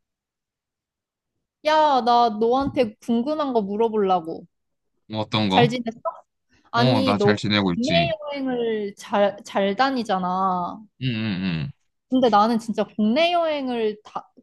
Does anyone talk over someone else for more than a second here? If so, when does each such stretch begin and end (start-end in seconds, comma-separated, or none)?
6.7-8.1